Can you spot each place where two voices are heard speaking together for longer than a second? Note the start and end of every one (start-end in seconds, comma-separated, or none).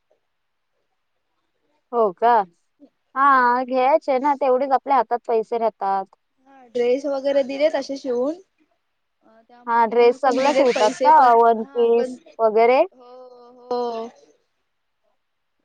9.7-12.1